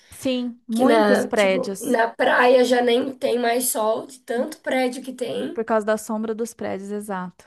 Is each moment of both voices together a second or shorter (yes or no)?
no